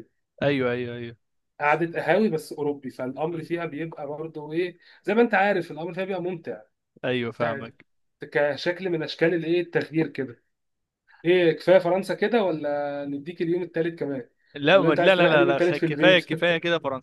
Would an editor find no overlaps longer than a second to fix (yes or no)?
no